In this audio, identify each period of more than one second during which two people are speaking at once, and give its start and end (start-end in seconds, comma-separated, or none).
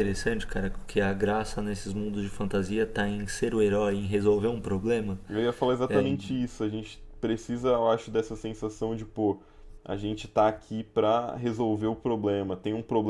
none